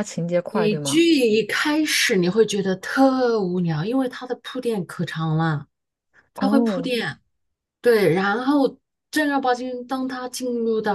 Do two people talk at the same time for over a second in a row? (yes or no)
no